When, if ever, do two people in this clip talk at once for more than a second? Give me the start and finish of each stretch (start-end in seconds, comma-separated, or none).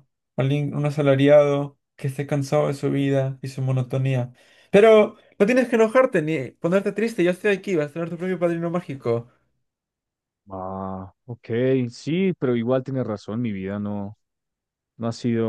none